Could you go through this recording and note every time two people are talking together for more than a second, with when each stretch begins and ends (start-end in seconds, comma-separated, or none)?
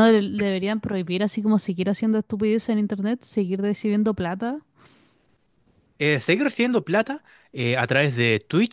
none